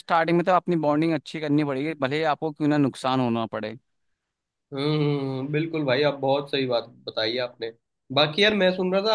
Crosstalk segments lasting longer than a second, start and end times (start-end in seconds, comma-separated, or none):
none